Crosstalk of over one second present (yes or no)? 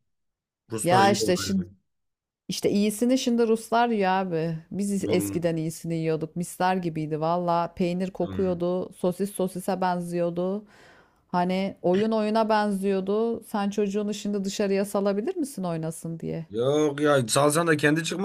no